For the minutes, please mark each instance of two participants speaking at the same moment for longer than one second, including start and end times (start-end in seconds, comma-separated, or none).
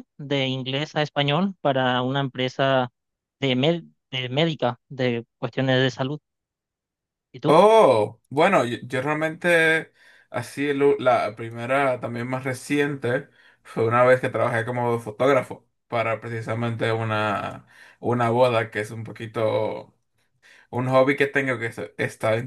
none